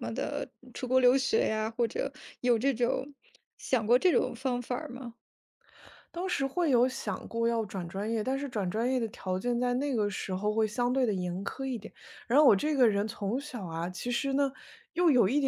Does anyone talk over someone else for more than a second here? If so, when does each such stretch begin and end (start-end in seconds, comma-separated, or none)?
none